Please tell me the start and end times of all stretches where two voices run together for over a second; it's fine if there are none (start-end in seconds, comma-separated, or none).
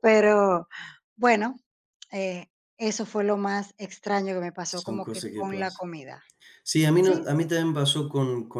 4.6-5.9